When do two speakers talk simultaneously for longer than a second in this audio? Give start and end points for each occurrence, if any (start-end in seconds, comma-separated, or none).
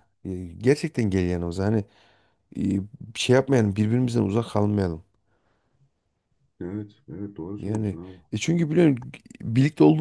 none